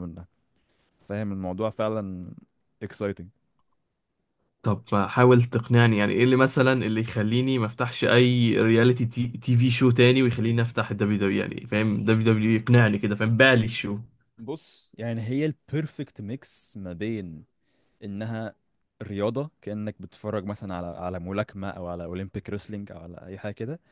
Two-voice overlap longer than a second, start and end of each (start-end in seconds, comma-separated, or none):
none